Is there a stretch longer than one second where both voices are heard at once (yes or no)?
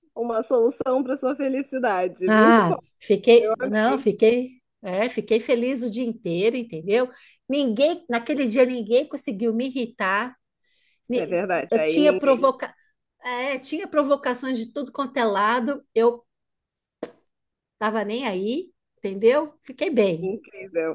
yes